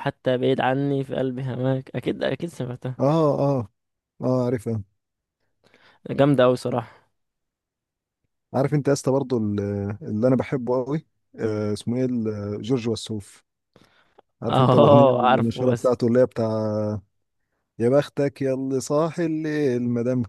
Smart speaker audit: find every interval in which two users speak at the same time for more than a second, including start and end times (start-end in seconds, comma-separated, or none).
14.5-15.9